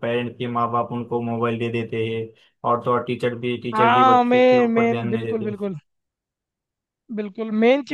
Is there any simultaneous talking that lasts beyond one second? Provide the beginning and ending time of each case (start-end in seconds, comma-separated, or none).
3.7-5.5